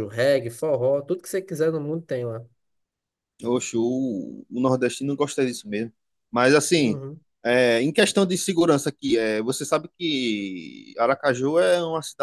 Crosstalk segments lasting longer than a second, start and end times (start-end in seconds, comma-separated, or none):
none